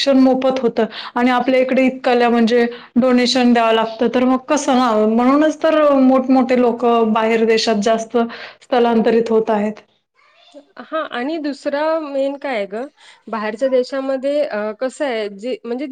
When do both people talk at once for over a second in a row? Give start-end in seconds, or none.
none